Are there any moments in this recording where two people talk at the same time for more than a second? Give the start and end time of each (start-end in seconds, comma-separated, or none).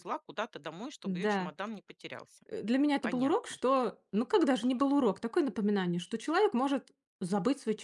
none